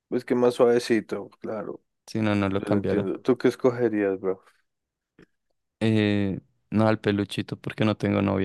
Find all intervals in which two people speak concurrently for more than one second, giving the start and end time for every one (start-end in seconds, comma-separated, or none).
none